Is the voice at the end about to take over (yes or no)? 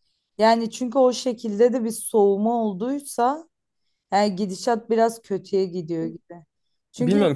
no